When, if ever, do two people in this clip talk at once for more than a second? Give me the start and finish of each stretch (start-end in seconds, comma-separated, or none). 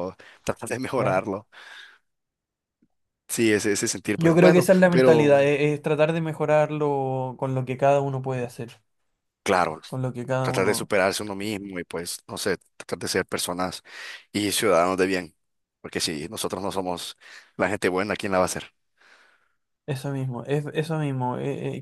4.2-5.5